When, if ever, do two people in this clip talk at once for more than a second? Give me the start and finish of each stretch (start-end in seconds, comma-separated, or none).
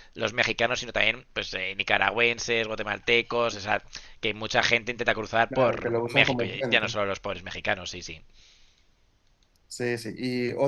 5.5-7.0